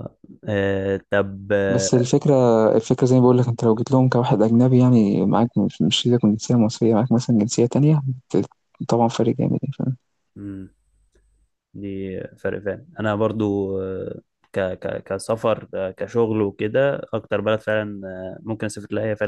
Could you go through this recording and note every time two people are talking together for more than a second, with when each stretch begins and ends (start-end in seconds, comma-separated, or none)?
none